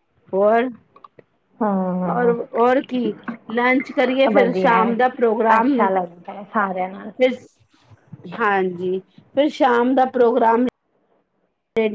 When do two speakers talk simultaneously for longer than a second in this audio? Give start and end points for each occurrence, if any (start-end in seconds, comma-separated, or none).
none